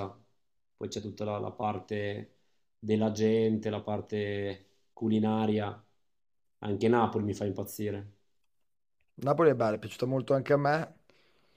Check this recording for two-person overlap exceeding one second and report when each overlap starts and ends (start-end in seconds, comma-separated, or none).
none